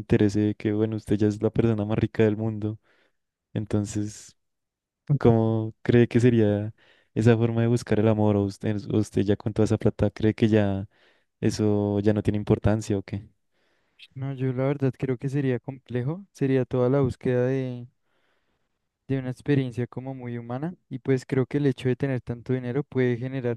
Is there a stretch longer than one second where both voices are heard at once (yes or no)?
no